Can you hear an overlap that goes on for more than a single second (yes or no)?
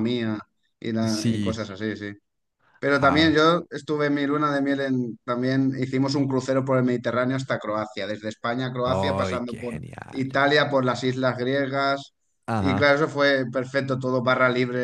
yes